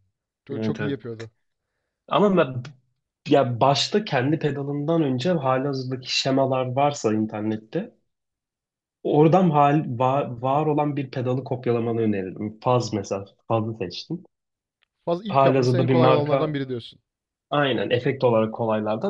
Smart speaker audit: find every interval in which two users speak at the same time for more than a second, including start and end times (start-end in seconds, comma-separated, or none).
15.3-16.6